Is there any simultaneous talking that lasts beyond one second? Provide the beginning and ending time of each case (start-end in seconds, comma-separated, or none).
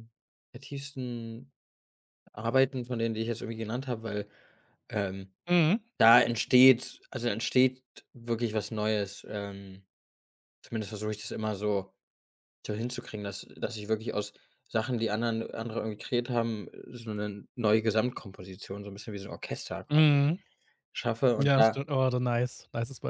none